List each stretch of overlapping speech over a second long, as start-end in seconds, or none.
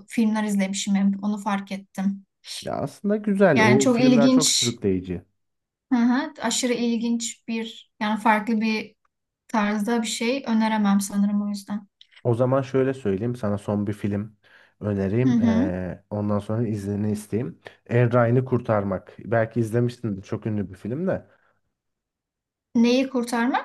3.5-4.7